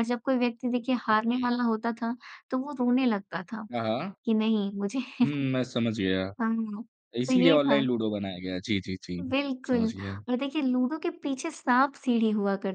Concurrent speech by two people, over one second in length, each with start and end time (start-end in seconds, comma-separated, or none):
none